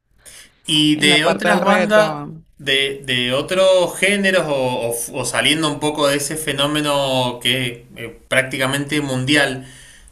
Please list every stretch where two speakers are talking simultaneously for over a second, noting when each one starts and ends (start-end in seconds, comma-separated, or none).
0.9-2.2